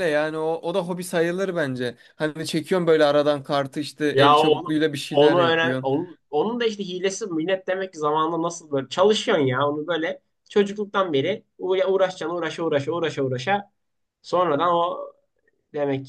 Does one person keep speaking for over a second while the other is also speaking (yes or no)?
yes